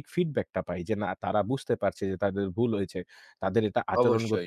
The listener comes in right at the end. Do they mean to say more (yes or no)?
no